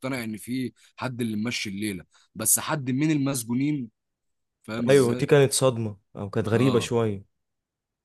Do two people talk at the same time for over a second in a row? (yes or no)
no